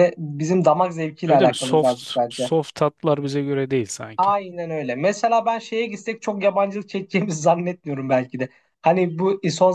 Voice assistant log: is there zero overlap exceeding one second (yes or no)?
no